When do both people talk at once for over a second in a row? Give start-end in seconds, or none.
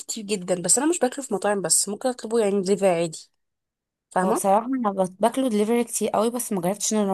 none